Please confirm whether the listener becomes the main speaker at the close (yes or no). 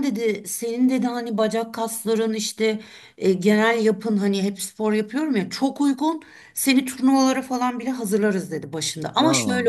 no